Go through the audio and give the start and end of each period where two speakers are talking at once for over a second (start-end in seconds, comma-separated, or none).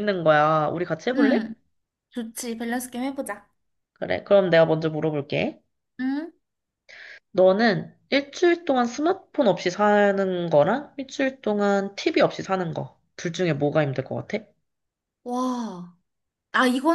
none